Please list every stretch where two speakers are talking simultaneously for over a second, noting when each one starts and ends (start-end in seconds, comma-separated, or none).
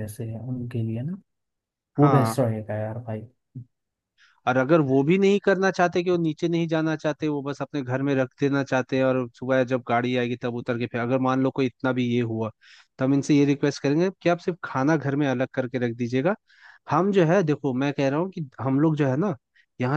none